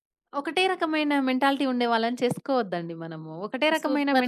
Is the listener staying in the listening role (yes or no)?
yes